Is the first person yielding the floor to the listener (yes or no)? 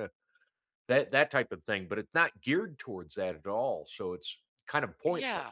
yes